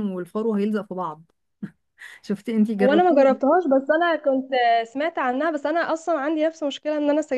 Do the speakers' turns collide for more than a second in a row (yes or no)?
no